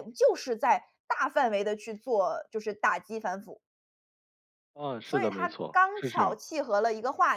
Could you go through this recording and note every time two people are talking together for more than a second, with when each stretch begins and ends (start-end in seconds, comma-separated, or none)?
5.0-6.4